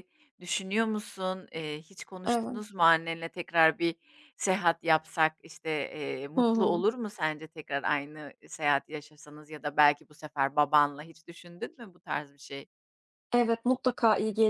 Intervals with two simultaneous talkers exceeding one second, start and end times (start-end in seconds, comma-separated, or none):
none